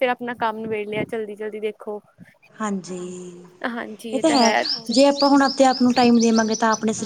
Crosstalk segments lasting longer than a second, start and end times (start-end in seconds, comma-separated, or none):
none